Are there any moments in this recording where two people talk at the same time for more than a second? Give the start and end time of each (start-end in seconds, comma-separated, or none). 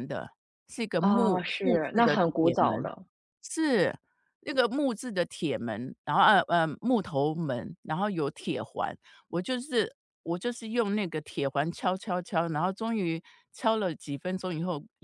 1.0-2.9